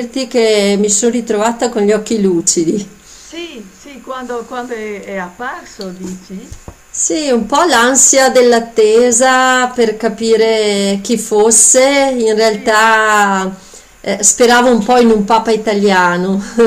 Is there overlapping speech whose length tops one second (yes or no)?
no